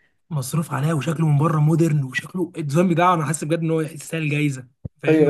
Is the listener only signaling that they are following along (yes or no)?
no